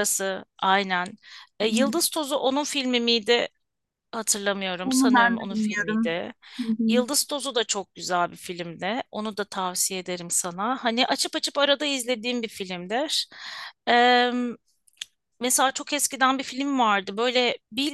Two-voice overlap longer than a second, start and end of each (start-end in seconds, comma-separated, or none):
4.8-6.2